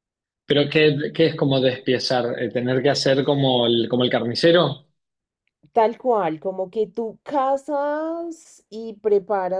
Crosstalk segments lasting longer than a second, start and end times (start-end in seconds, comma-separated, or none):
none